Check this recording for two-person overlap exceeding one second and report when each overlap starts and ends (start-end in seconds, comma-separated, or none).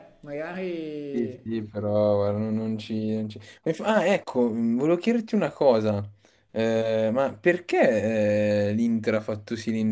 none